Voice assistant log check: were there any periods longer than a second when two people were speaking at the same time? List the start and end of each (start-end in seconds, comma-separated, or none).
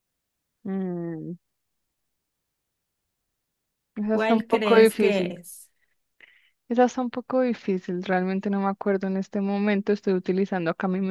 4.1-5.3